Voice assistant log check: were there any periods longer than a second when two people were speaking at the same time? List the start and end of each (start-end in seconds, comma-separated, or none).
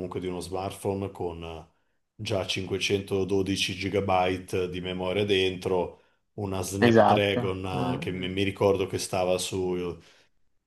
6.8-8.3